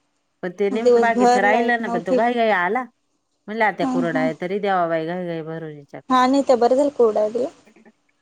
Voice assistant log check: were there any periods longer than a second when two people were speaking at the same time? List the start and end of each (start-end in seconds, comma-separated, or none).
0.8-2.2